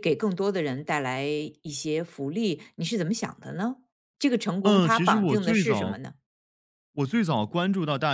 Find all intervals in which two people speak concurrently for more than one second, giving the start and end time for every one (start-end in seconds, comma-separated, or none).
4.6-6.0